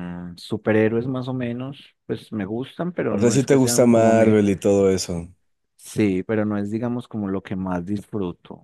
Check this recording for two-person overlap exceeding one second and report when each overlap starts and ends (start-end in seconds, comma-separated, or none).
3.1-4.4